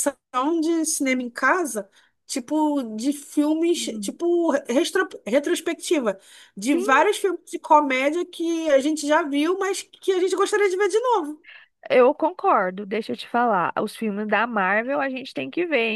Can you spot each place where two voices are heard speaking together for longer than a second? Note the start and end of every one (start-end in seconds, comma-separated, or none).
none